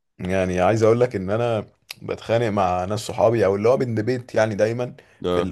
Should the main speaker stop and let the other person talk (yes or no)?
no